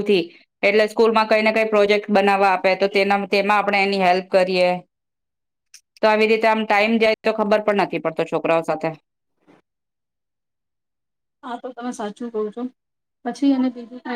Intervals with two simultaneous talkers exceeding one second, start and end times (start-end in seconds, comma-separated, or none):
none